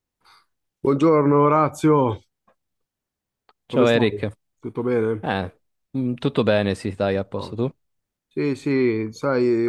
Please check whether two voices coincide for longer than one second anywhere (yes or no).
no